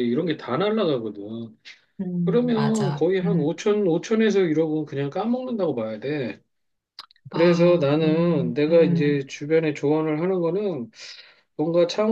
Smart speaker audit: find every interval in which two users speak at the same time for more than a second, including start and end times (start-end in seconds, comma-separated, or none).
2.2-3.5, 7.3-9.2